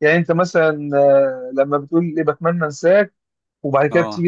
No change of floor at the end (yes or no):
yes